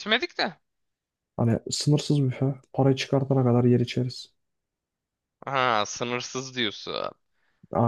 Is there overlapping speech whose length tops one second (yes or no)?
no